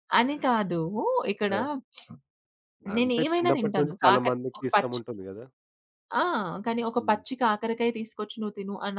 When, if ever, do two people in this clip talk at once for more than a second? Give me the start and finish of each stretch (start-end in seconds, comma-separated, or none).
2.9-5.0